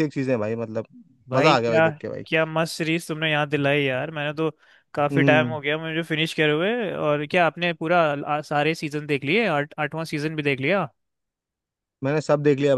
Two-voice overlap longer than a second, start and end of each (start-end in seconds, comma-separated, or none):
none